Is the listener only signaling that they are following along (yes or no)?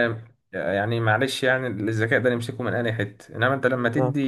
yes